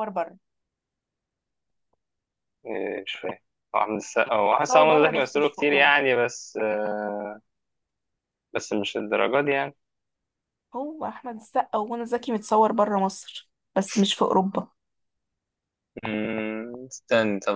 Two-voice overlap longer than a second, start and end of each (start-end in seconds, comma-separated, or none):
4.5-6.0